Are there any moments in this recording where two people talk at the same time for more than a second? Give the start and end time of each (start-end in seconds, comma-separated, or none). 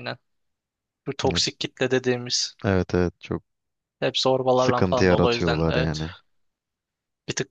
4.5-6.0